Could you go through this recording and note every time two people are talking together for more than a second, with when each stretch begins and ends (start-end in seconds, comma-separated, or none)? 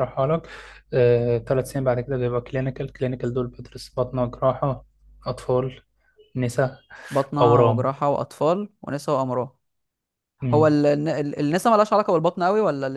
none